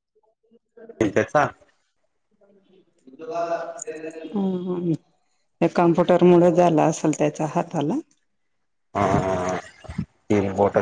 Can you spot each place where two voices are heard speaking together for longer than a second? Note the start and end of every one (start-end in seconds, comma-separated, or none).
none